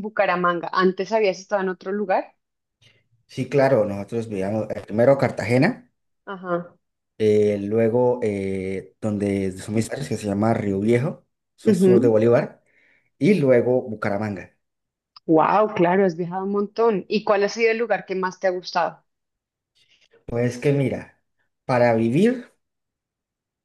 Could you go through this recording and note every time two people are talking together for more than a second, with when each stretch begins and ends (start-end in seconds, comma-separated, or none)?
none